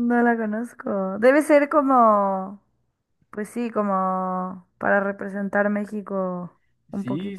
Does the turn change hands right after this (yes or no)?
yes